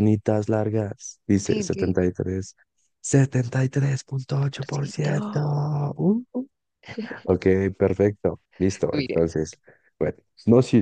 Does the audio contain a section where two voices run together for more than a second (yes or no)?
yes